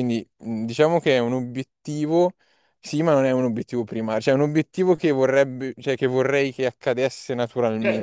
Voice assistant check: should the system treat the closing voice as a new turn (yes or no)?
yes